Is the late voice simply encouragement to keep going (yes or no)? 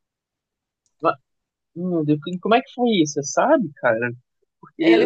yes